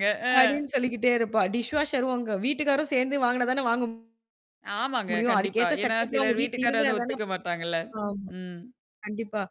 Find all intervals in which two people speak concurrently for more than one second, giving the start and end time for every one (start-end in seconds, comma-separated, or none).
5.1-7.1